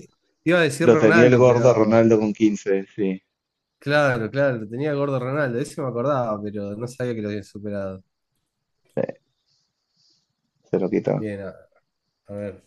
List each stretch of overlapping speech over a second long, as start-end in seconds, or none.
0.8-2.1